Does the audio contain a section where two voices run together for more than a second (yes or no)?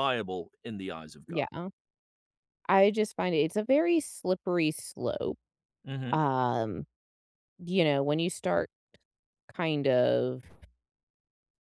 no